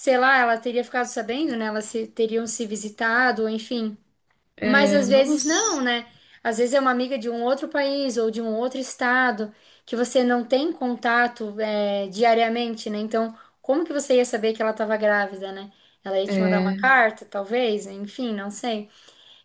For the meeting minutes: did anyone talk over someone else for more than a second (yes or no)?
yes